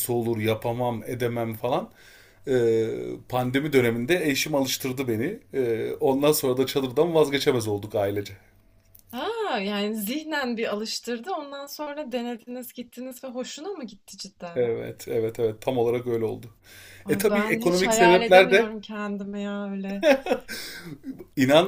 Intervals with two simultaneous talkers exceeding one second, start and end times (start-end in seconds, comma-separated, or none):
17.1-18.7